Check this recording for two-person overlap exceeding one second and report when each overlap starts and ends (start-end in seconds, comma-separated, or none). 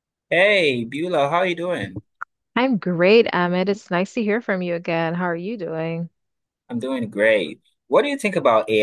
none